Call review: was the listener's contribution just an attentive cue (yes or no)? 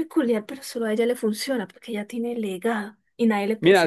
no